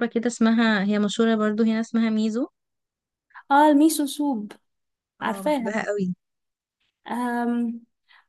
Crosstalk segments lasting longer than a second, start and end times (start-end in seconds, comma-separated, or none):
none